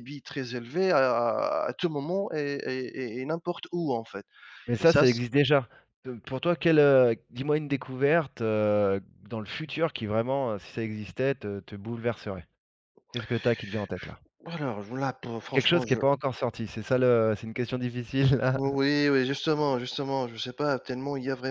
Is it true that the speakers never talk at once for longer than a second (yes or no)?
yes